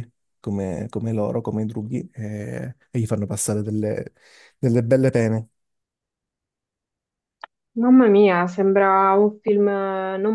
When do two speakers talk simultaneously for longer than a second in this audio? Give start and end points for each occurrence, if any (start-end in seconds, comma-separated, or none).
none